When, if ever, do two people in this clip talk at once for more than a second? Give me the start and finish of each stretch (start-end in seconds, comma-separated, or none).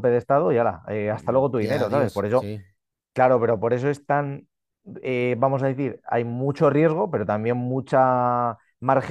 1.1-2.5